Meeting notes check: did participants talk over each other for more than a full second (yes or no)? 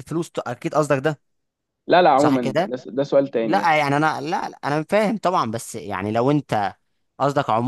no